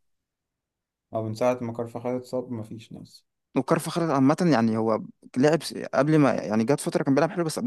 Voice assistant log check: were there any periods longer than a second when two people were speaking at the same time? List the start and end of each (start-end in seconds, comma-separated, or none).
none